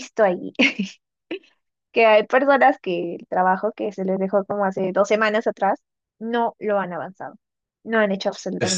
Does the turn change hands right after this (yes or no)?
yes